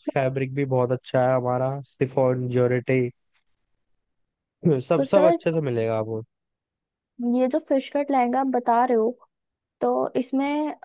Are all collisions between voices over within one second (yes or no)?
yes